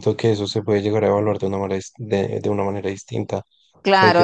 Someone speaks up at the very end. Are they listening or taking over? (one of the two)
taking over